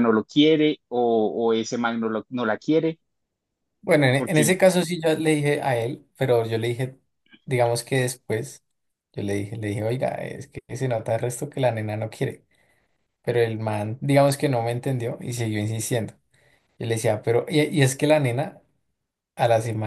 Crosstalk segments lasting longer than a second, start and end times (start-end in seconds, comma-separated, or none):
none